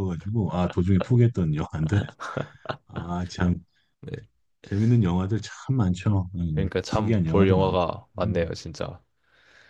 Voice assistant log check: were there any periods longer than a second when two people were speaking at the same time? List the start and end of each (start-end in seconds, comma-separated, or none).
6.5-8.3